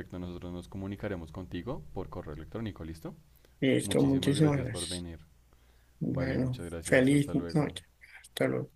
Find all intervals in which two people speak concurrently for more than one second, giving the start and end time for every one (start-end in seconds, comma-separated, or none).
3.8-5.1, 6.1-7.8